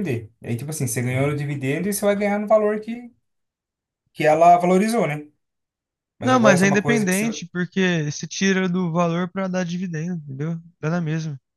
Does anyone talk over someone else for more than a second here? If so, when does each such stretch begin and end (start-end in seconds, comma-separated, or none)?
6.2-7.5